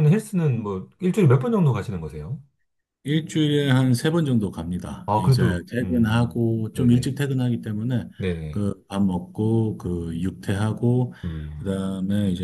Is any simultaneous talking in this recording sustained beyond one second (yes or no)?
yes